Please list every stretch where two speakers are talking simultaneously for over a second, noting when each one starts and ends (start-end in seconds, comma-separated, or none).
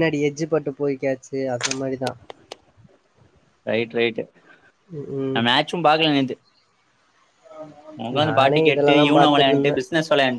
8.2-9.8